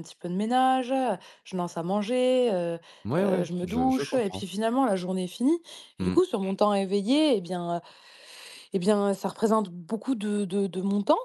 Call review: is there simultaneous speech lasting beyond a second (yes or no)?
yes